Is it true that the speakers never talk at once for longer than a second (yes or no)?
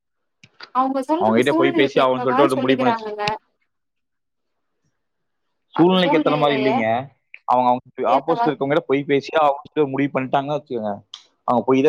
no